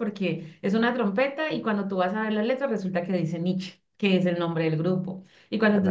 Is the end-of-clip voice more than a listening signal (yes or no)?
no